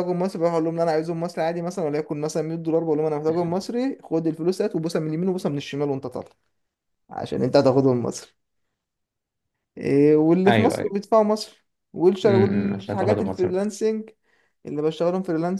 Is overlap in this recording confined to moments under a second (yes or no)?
no